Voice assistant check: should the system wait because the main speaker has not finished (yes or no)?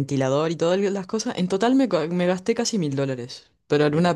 yes